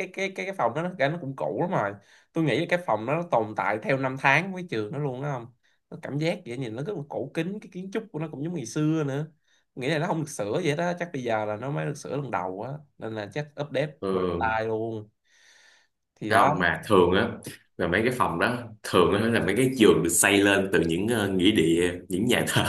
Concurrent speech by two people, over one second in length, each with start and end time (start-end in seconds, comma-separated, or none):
none